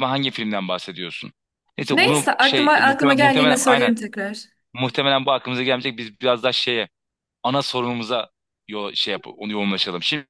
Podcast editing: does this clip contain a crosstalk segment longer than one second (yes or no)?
yes